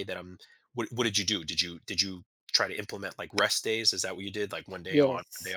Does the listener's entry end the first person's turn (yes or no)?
yes